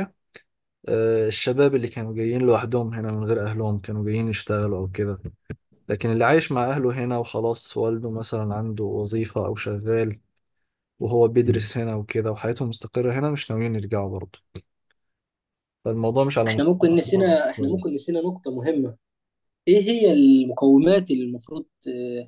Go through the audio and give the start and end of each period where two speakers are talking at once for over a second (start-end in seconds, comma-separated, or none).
16.5-18.0